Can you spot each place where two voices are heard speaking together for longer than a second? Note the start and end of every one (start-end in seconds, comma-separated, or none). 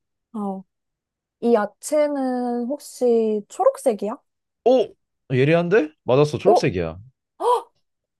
none